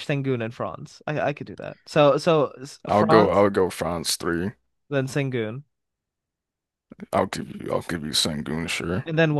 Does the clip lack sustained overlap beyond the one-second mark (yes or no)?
yes